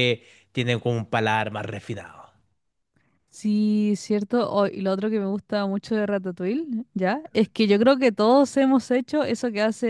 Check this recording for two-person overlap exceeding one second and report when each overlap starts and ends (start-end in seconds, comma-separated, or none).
none